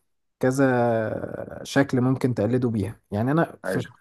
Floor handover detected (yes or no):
no